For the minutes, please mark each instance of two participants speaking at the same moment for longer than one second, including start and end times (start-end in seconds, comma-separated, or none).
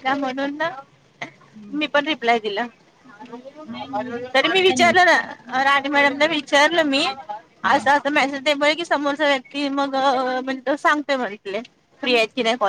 4.3-7.0